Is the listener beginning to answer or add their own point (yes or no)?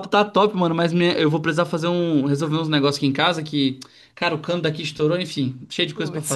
yes